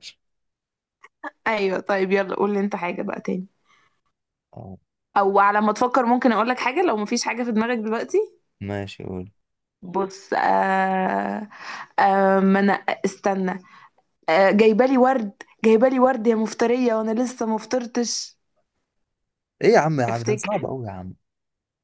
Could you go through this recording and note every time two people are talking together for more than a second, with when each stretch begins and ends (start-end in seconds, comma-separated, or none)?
none